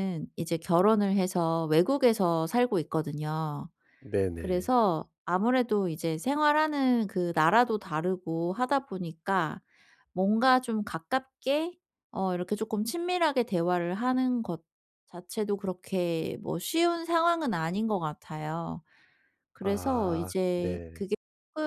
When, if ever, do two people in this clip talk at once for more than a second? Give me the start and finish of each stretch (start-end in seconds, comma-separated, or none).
19.6-21.0